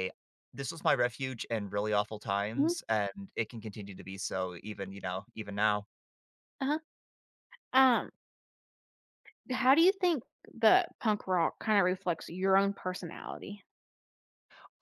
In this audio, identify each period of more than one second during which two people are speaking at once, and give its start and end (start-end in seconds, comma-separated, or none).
none